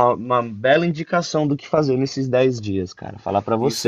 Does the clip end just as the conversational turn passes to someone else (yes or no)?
yes